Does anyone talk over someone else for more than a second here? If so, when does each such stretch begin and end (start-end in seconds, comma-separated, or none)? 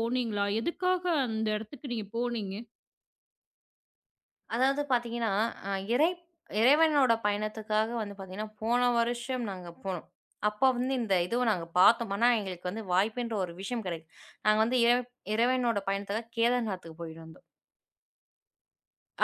none